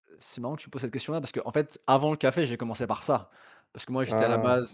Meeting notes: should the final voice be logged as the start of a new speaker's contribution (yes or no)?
no